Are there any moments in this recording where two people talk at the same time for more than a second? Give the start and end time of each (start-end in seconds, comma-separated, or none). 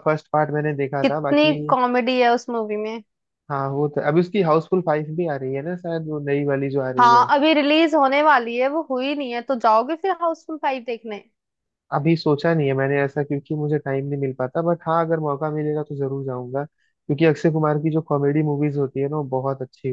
none